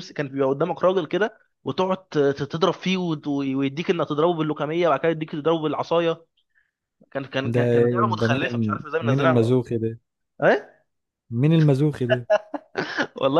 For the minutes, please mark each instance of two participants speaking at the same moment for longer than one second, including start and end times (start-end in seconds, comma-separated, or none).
7.4-9.6